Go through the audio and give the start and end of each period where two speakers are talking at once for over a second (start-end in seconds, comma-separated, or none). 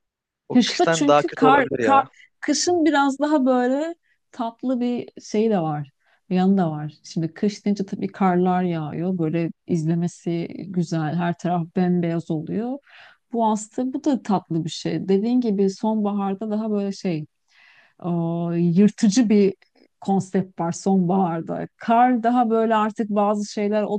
0.5-2.0